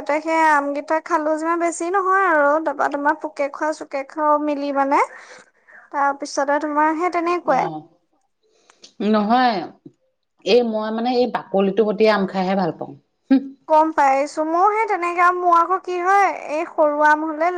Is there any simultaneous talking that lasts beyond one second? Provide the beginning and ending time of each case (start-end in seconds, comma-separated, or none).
none